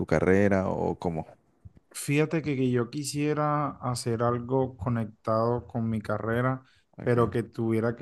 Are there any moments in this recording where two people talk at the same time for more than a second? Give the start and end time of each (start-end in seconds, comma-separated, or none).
none